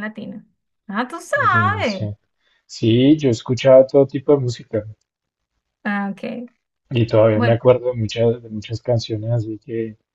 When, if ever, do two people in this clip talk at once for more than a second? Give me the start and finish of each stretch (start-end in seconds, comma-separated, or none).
none